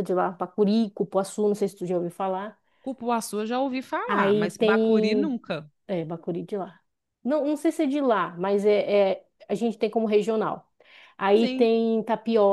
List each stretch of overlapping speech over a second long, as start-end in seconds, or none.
4.0-5.3